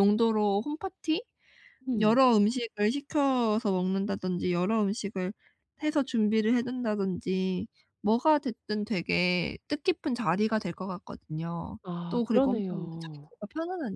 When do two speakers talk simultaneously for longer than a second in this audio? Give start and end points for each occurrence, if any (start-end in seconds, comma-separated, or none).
11.8-13.3